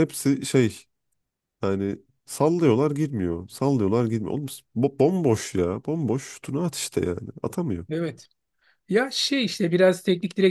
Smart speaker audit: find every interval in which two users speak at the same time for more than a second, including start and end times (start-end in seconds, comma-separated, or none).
none